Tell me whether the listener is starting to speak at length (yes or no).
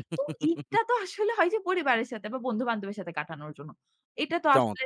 no